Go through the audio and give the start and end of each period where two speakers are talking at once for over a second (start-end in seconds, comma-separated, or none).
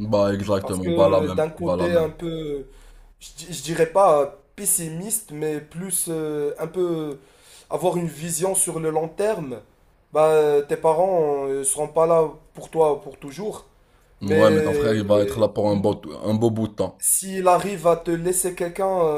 0.6-2.1, 14.2-15.5